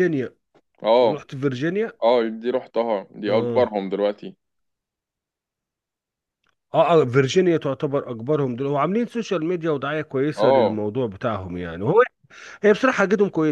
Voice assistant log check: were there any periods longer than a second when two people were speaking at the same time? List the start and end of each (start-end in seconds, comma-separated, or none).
none